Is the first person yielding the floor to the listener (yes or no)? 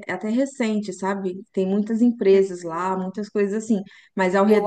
no